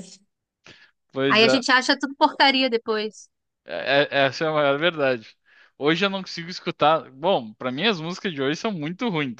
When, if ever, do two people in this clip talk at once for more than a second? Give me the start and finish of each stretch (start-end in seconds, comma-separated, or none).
none